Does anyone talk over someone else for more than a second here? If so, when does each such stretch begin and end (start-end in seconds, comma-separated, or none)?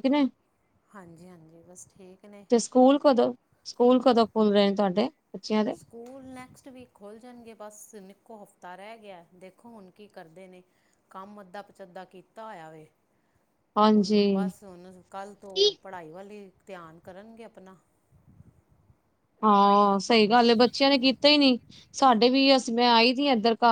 none